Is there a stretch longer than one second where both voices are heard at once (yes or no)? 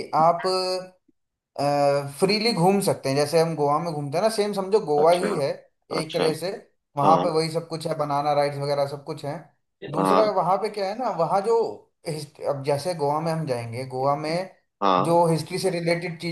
no